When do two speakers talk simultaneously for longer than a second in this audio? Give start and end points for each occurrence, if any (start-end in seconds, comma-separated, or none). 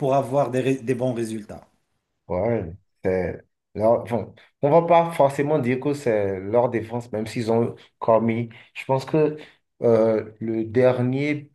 none